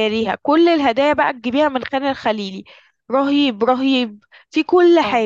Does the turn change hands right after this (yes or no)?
no